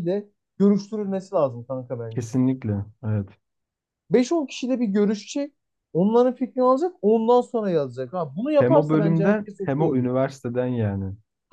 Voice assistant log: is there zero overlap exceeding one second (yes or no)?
no